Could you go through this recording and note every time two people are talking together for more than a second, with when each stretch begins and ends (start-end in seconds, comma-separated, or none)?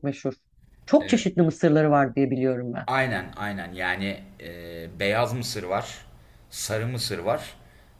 none